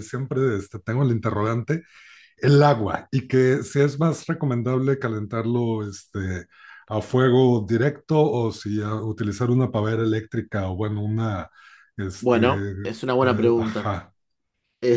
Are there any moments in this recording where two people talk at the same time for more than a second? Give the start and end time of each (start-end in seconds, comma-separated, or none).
12.2-13.9